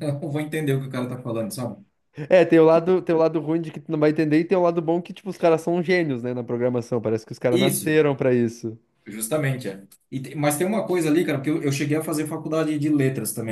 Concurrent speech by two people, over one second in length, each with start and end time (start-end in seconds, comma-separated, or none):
none